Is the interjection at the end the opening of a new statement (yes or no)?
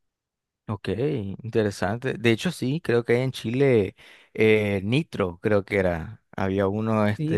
yes